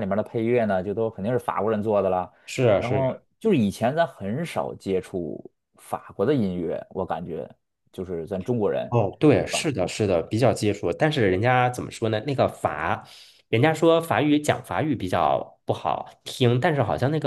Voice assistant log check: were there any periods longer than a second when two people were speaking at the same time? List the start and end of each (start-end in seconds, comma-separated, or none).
none